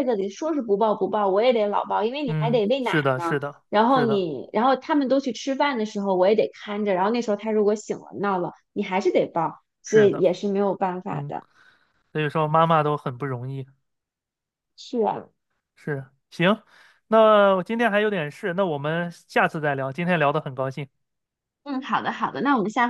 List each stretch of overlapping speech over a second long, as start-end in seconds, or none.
2.2-4.3